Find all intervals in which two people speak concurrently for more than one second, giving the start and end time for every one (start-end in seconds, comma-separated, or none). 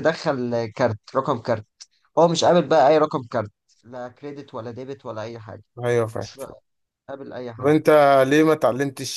none